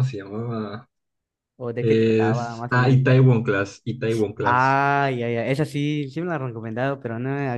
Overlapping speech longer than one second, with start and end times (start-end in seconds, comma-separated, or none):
1.8-3.0